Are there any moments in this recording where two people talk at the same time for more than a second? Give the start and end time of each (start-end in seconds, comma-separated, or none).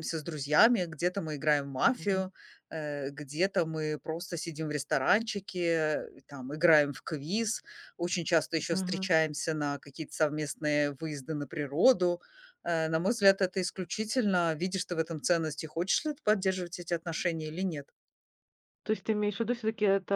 none